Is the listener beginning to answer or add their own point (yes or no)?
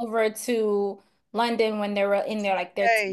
no